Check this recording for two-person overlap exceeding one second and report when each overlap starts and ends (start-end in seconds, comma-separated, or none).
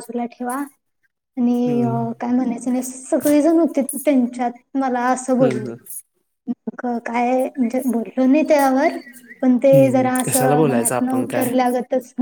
9.7-11.5